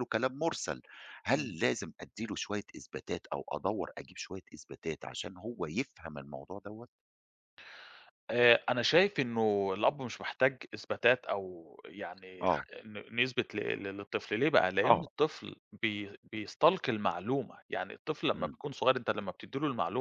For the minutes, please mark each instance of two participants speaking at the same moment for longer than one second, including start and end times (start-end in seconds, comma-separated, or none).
none